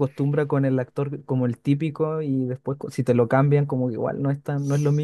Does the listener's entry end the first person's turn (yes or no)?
yes